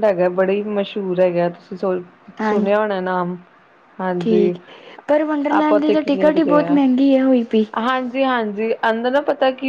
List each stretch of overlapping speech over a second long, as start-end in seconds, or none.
5.6-6.8